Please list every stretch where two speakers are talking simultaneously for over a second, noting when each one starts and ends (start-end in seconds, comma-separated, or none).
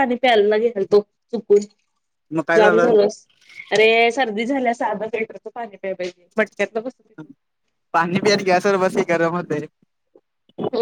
none